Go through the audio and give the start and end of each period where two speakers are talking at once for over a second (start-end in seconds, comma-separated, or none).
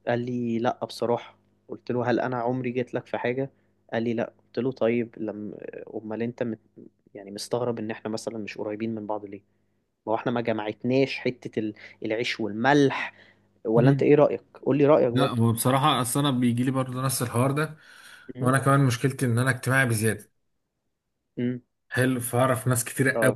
none